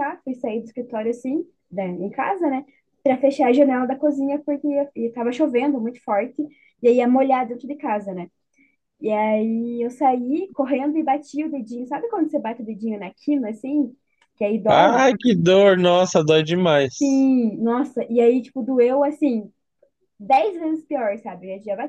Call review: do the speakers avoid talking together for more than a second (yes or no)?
yes